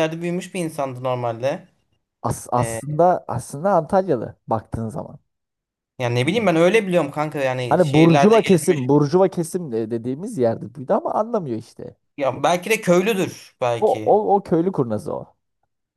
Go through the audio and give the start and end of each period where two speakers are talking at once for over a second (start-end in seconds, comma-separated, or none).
7.7-8.9